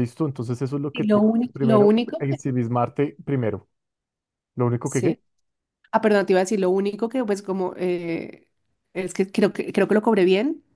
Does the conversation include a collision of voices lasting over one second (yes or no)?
yes